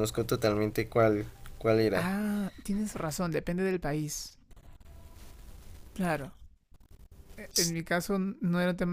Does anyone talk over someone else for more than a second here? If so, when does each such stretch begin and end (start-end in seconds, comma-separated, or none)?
none